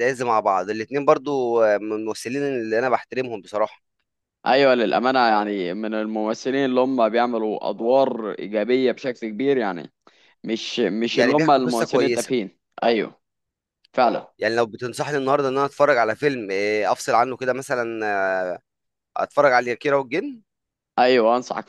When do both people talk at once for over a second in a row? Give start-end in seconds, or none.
11.1-12.3